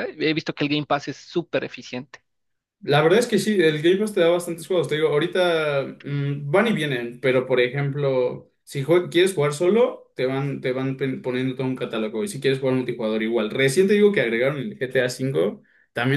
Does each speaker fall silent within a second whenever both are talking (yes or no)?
yes